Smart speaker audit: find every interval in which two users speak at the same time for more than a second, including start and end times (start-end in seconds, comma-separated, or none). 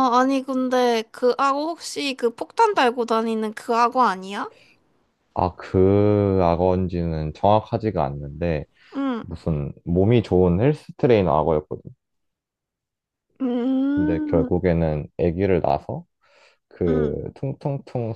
none